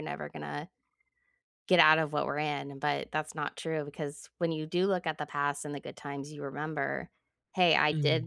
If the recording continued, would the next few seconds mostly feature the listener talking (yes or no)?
no